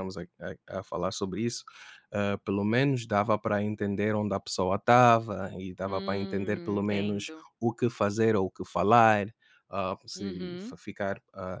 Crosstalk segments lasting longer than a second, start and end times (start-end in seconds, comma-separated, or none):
5.8-7.4